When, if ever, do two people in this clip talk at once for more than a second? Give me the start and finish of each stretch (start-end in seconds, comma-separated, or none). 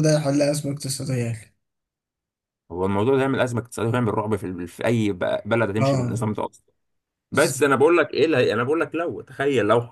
none